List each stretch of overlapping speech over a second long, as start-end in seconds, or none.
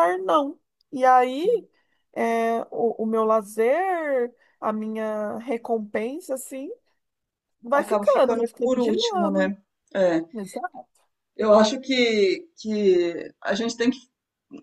7.8-9.6